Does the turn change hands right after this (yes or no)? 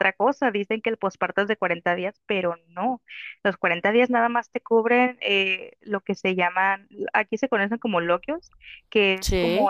no